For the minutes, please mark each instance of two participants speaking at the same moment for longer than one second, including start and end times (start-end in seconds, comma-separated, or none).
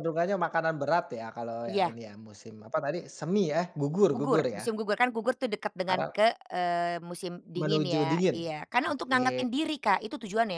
7.5-9.4